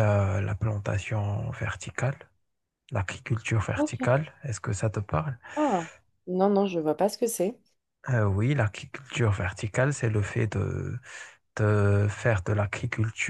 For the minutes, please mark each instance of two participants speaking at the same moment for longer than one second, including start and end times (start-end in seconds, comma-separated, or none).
none